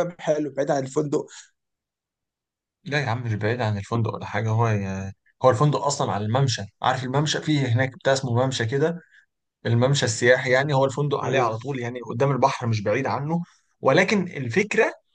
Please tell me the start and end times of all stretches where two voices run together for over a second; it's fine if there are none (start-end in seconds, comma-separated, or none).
none